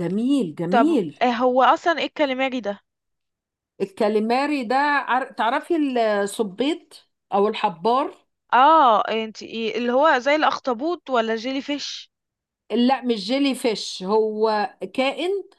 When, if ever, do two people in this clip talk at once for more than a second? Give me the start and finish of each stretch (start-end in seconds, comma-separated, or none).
none